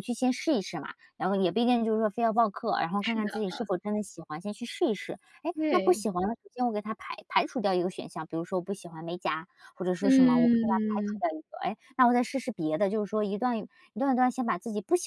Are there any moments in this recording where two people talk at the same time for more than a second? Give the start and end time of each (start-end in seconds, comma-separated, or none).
10.0-11.2